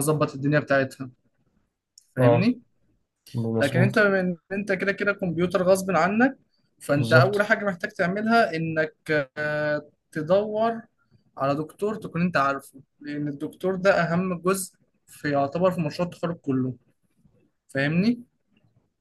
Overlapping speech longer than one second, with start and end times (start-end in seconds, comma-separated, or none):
none